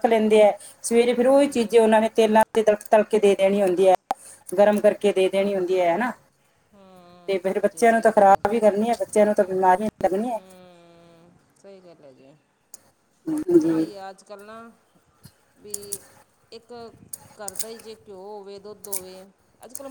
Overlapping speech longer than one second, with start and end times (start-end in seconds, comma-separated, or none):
6.7-8.4